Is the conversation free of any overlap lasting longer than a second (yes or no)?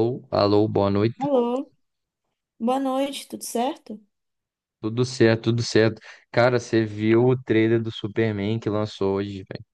yes